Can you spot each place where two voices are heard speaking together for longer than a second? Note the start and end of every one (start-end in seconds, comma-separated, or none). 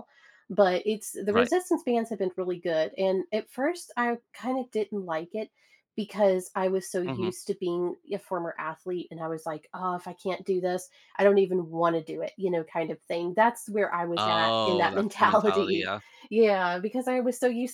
14.2-15.9